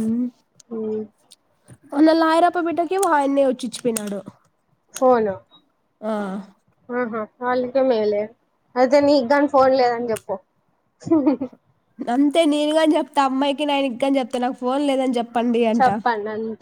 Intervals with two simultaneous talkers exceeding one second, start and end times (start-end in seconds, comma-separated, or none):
none